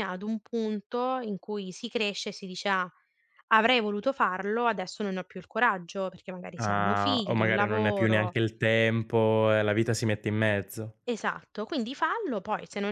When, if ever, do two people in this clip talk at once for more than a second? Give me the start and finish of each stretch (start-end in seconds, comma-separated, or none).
6.7-8.4